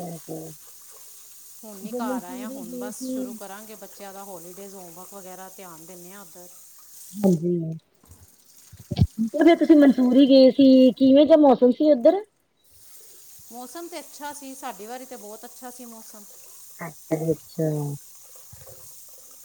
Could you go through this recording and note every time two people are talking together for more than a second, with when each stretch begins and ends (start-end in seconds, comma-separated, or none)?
none